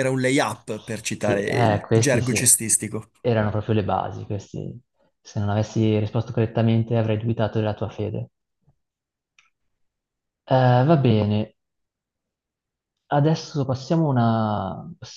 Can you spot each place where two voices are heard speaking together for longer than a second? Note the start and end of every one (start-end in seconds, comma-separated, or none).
1.2-2.4